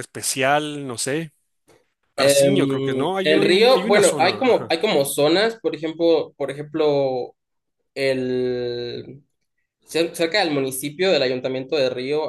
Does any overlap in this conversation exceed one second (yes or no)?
yes